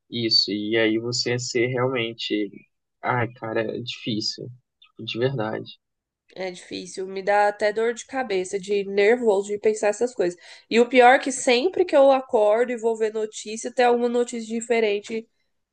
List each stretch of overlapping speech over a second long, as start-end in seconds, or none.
none